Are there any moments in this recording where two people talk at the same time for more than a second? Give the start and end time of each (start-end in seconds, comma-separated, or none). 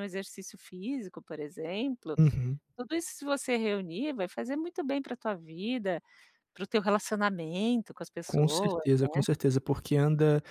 none